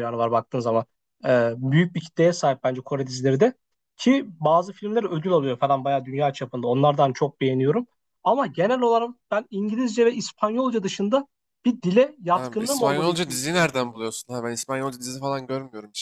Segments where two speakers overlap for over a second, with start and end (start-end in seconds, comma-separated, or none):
12.3-14.1